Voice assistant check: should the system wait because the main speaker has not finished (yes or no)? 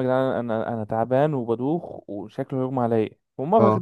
yes